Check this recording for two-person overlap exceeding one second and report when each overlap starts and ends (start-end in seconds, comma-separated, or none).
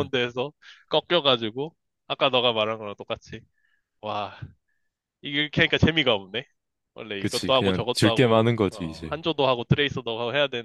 7.2-9.2